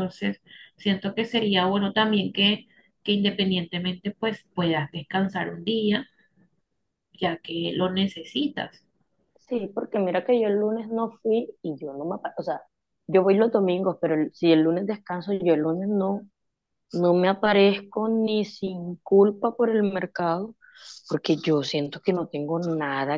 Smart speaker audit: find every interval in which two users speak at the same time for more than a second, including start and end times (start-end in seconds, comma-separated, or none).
none